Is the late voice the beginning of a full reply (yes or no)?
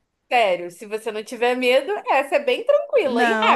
yes